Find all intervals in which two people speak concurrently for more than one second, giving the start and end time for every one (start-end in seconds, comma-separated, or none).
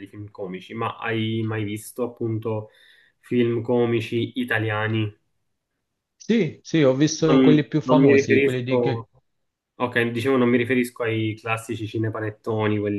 7.2-9.1